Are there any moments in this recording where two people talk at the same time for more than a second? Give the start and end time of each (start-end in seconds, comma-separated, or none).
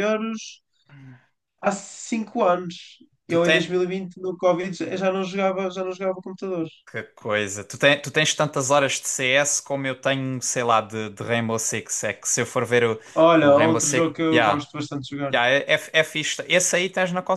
13.4-14.7